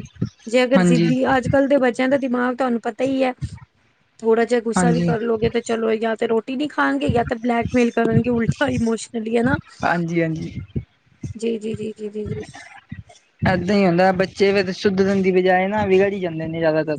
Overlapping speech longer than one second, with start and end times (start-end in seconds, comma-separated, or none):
none